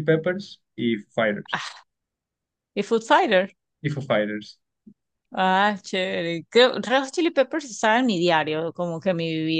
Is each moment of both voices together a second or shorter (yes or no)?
yes